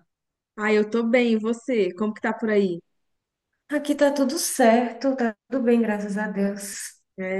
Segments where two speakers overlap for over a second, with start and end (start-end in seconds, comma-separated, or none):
none